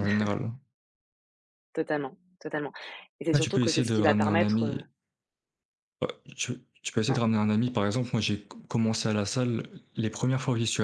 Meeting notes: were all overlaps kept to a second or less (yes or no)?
no